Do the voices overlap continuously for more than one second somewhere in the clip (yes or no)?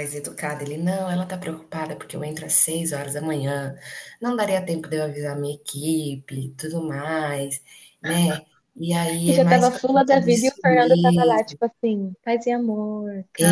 yes